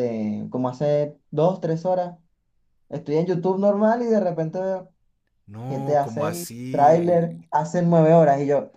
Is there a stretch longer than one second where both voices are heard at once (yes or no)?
yes